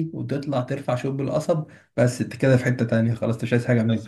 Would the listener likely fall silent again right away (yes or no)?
no